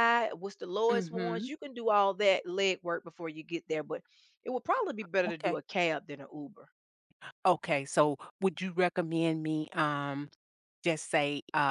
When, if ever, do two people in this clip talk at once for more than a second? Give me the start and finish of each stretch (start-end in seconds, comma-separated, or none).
none